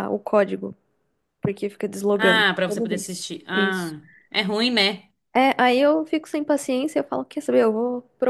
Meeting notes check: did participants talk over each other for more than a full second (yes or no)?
yes